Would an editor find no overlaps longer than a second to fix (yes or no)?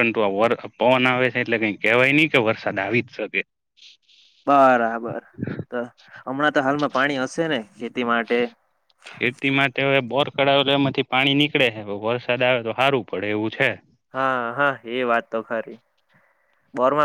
yes